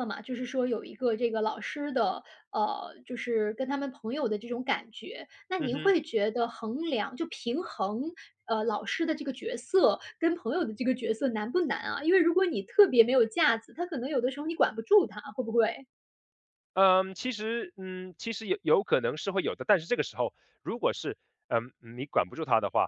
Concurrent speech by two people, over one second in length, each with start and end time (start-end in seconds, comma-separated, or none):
none